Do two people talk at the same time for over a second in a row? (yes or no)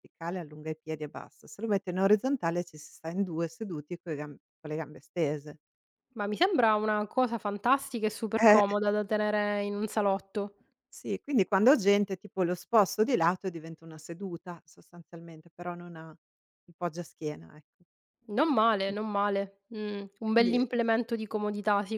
no